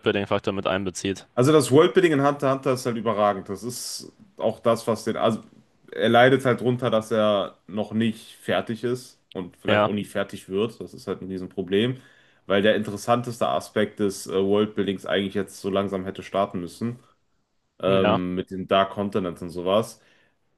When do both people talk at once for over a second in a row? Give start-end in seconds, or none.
none